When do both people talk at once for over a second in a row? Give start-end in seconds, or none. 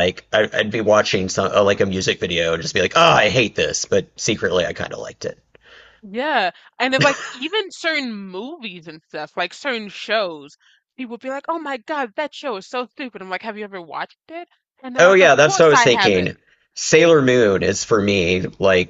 15.0-16.4